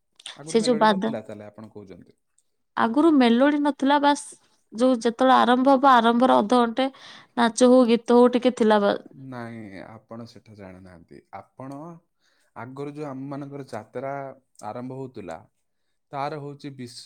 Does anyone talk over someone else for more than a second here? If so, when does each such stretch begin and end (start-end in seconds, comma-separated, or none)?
none